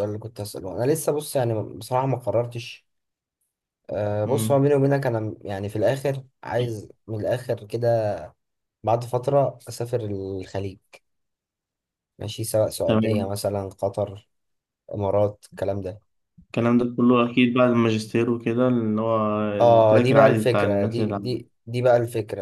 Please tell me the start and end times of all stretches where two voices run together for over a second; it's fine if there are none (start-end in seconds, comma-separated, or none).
19.6-21.4